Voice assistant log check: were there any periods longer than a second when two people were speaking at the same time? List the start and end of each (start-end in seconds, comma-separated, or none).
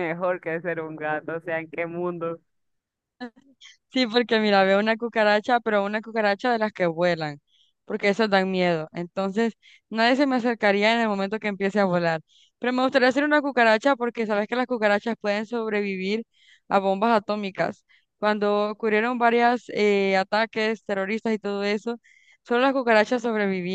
none